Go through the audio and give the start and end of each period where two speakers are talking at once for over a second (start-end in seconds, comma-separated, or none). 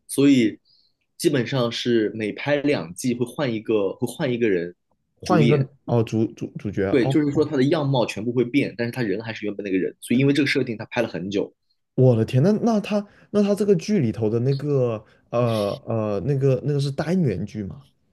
none